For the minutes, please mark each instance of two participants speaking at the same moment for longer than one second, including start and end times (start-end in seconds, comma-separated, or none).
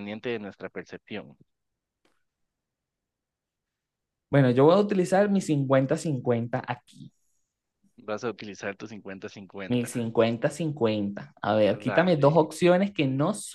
none